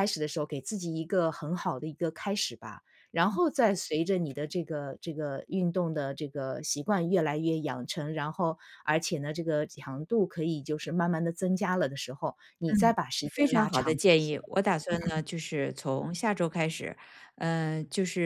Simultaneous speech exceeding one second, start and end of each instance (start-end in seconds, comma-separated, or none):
12.7-14.3